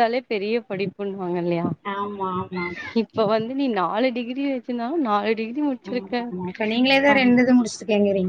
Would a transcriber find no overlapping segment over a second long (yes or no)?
yes